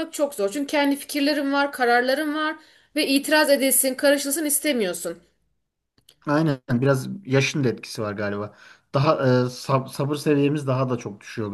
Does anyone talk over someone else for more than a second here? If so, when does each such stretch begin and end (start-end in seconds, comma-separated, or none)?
none